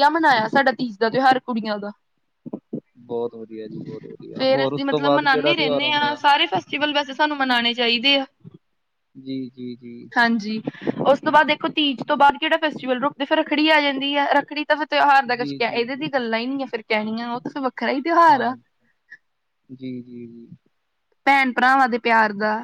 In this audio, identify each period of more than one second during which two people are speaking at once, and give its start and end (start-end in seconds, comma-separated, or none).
4.4-6.2